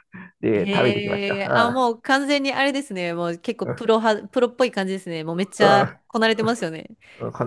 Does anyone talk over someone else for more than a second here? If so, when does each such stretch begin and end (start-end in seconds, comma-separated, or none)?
0.5-1.8